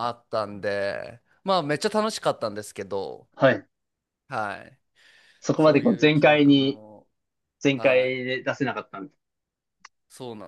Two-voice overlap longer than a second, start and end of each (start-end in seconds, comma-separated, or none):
5.6-6.8